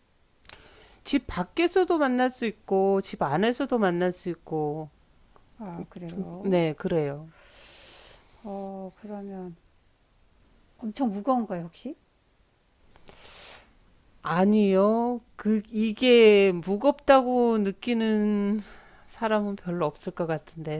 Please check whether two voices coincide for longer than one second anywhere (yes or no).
no